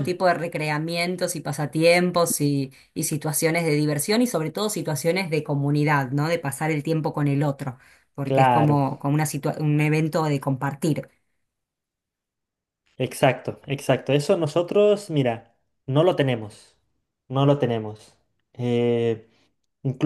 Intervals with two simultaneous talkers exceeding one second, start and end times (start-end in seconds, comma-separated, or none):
none